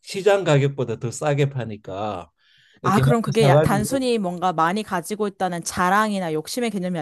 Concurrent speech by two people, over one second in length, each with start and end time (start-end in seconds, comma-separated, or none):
2.8-4.1